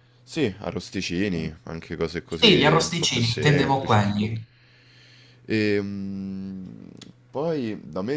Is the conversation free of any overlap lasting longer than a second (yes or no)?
no